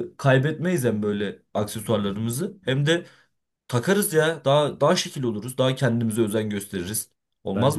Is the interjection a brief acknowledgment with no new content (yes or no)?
no